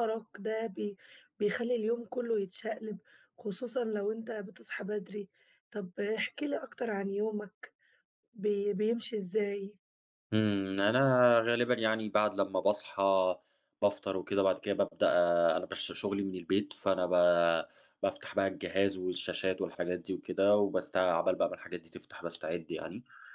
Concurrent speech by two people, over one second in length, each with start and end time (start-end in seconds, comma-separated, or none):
none